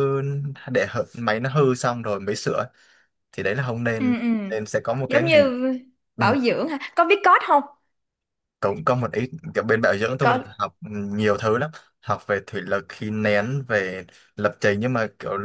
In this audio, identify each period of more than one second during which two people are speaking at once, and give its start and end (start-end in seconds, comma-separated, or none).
none